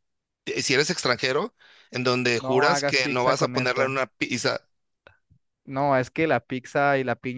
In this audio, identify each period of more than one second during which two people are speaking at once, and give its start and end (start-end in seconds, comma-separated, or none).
2.4-3.9